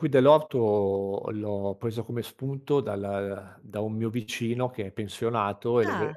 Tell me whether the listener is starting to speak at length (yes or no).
no